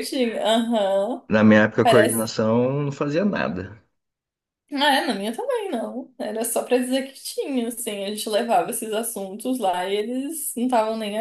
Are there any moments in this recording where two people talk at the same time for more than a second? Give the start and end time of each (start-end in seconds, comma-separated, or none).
none